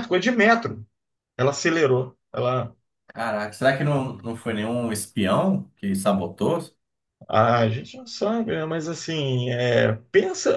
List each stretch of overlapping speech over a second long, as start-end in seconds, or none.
none